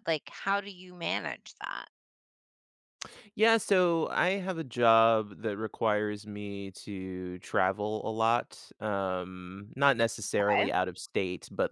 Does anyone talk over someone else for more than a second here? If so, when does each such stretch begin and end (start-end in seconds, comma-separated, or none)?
none